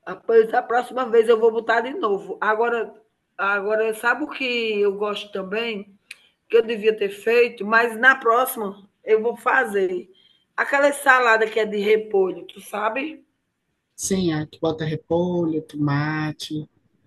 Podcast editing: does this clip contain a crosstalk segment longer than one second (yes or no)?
no